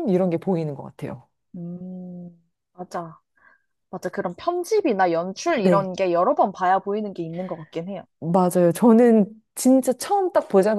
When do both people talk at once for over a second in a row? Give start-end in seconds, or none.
none